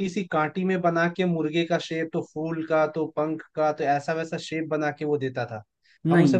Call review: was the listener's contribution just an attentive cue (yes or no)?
yes